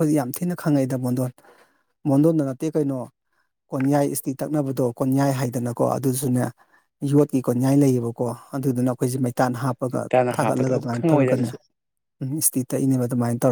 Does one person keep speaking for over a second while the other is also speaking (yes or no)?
yes